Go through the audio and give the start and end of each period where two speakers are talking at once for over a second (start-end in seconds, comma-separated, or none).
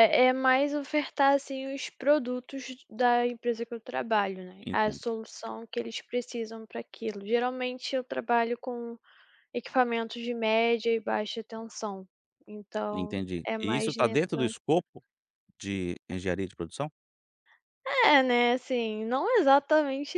12.9-14.5